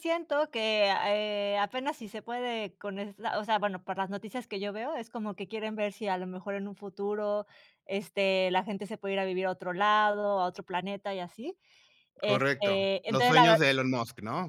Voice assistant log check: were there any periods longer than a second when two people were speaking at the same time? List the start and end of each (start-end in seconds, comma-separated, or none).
12.2-13.6